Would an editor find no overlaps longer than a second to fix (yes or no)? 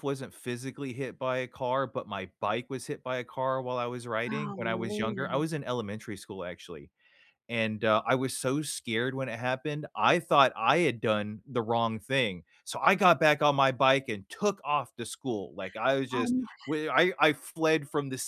no